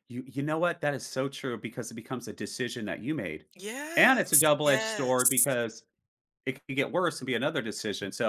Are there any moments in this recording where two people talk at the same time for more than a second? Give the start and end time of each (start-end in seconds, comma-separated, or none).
4.0-5.5